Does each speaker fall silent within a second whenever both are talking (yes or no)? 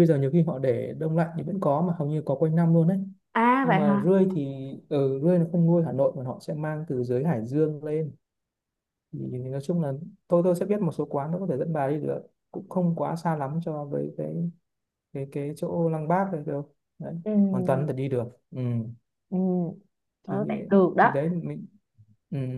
yes